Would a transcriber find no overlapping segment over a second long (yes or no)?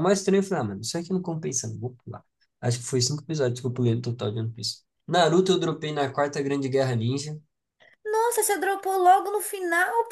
yes